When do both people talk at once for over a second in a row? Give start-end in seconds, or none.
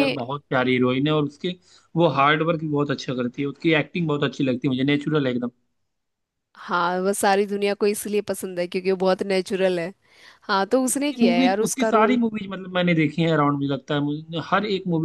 10.9-12.2